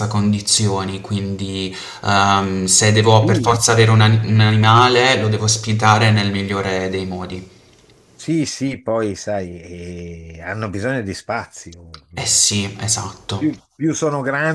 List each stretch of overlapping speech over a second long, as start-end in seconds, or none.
none